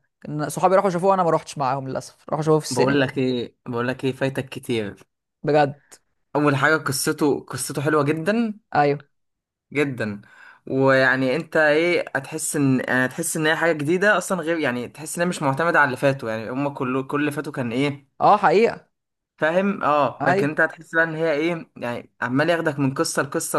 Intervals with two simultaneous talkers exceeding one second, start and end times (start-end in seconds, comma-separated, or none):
none